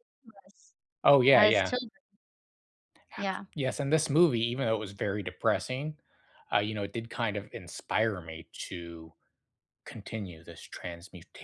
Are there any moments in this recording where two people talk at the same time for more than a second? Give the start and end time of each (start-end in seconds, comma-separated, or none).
none